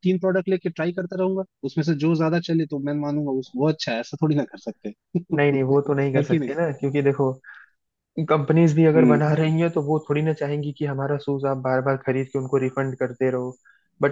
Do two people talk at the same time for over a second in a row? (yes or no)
no